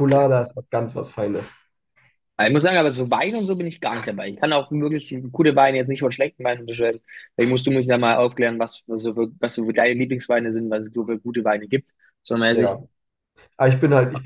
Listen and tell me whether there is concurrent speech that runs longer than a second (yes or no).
no